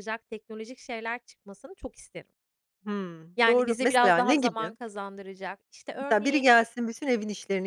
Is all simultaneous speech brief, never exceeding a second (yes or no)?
no